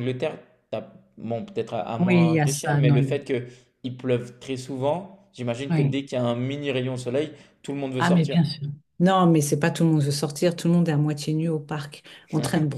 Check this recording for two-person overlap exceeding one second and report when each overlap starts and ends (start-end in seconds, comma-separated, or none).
2.0-3.2